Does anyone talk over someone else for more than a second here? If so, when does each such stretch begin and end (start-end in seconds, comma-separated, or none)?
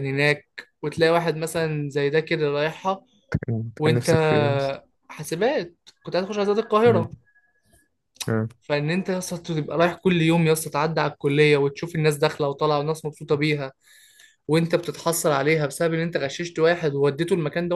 none